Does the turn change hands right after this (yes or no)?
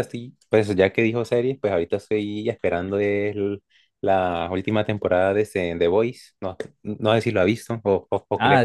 yes